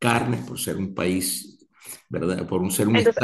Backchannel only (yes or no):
yes